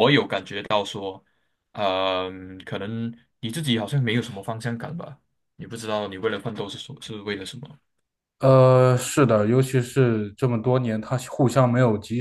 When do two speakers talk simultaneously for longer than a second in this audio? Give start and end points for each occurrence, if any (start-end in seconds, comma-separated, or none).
none